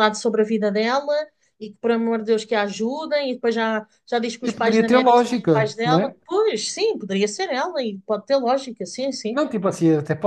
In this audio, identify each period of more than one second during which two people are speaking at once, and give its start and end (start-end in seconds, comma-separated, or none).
4.4-6.1